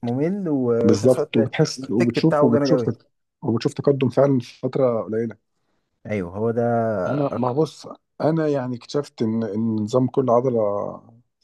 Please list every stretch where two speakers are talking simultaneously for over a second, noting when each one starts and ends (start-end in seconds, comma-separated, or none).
0.8-2.9